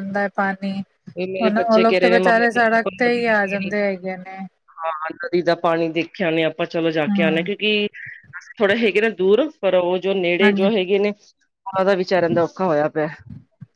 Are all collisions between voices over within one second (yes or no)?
no